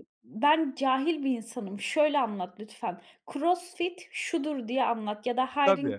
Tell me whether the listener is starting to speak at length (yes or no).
no